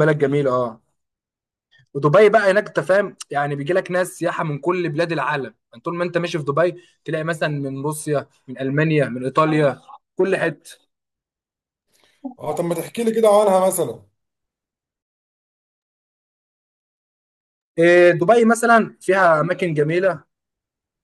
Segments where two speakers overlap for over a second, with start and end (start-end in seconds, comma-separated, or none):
none